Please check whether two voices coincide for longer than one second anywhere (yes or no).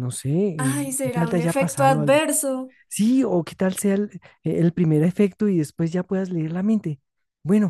yes